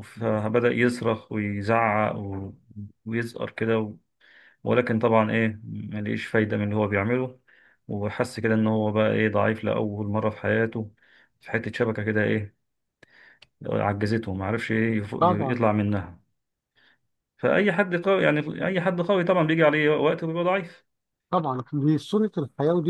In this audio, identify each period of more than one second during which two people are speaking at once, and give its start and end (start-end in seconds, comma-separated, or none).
none